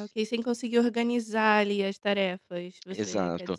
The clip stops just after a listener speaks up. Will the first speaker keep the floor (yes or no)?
no